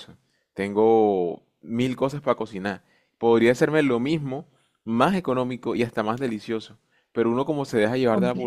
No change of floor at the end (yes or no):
yes